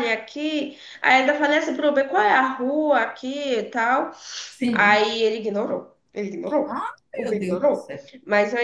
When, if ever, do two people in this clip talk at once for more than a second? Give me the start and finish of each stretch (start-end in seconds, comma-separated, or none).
6.6-8.1